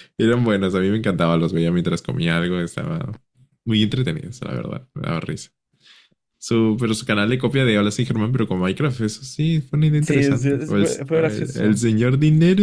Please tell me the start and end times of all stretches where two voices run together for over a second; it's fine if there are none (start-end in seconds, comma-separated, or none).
10.0-11.8